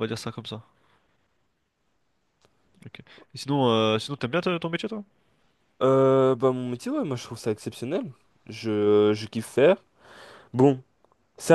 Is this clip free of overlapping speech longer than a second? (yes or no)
yes